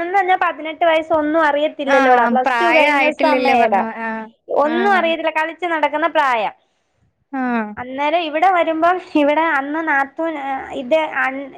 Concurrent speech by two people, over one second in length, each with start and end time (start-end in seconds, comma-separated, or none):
1.9-3.8